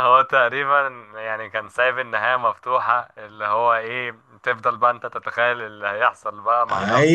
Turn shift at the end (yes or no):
yes